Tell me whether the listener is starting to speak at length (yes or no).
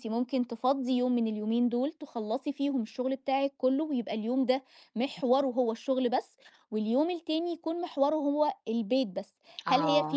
no